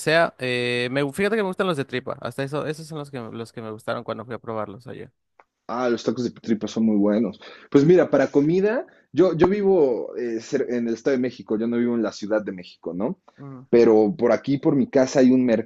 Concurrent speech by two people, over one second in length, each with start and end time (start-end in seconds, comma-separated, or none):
none